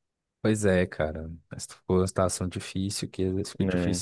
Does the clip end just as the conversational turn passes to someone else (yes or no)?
no